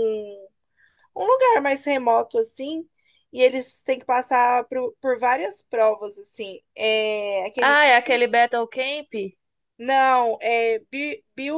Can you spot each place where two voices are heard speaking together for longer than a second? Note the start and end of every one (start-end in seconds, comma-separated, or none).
none